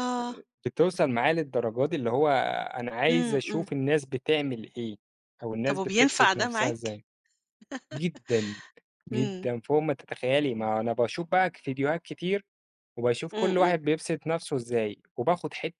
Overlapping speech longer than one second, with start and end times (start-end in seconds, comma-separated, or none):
5.7-7.0